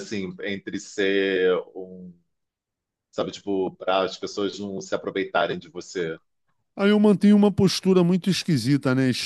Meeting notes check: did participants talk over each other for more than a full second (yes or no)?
no